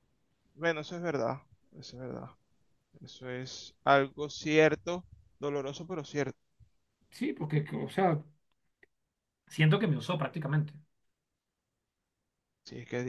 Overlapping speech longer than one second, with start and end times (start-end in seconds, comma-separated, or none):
none